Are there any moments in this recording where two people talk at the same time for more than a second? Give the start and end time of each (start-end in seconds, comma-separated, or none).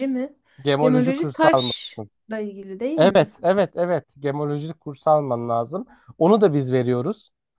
0.8-2.1